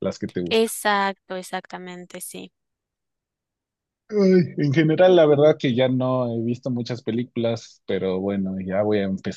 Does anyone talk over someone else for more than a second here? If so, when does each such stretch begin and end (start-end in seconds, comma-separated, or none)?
none